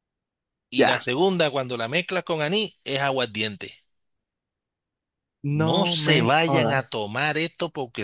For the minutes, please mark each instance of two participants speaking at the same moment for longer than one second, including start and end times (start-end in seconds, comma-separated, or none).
5.5-6.8